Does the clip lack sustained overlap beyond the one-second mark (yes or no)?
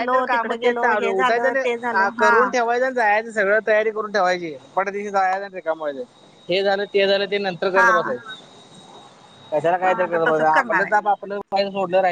no